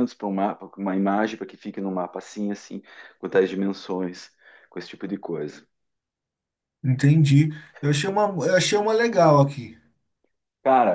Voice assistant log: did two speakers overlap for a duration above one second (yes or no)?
no